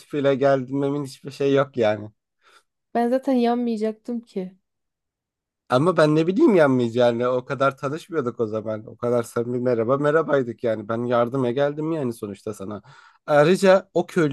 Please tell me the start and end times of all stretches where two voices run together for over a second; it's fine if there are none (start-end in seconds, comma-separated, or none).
none